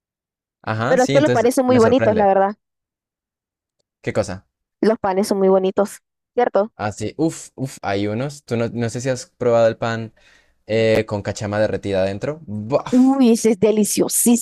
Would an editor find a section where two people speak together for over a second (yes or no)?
yes